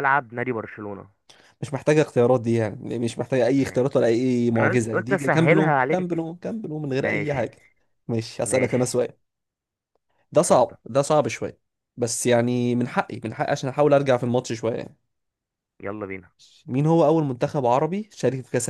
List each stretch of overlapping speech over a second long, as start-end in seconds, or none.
4.6-6.2